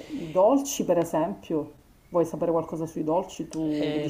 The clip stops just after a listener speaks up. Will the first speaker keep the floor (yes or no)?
no